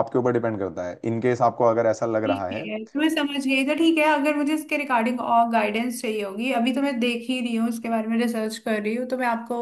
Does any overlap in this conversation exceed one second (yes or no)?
no